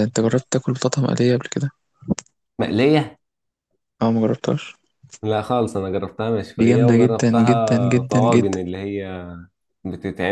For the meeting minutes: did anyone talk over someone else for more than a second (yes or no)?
yes